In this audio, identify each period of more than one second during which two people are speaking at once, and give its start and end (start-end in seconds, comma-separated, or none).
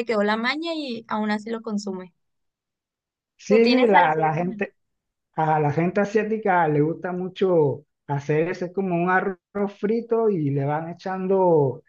3.5-4.7